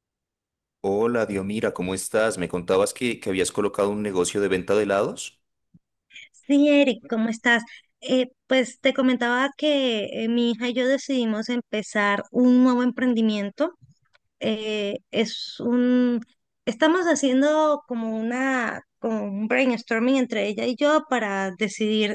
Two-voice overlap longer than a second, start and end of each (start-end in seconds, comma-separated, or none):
none